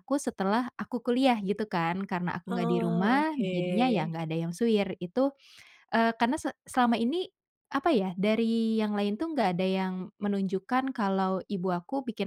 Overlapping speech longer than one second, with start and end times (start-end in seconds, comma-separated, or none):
2.5-4.1